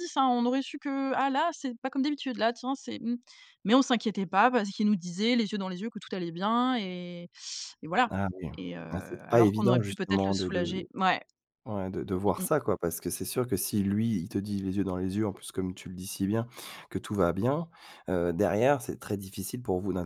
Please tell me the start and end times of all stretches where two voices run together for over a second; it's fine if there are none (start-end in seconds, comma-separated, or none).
9.3-10.9